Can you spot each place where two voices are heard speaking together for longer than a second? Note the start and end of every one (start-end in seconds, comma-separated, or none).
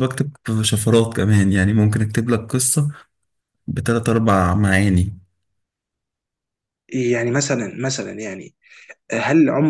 none